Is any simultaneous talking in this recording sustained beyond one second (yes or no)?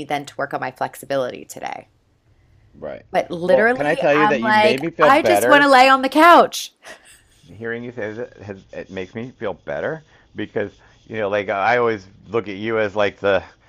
yes